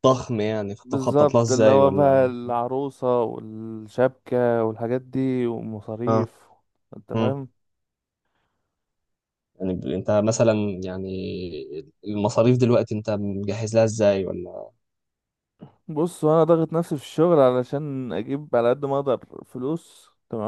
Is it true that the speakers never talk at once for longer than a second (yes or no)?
no